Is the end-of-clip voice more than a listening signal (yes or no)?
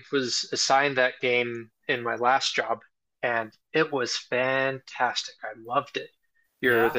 no